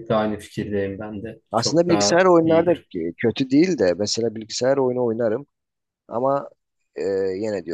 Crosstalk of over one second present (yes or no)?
yes